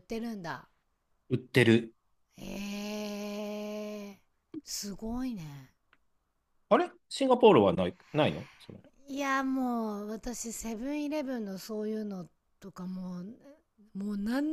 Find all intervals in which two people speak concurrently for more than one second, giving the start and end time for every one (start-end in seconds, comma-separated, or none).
none